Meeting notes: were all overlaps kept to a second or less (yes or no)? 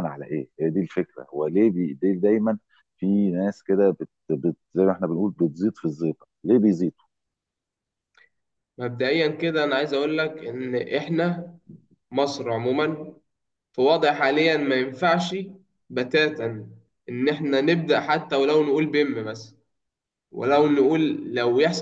yes